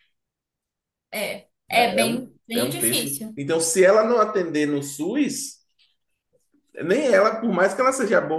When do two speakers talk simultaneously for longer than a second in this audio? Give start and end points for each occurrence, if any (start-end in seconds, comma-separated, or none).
1.7-3.4